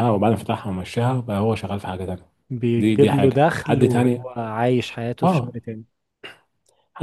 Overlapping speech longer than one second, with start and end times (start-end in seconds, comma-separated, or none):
2.8-4.3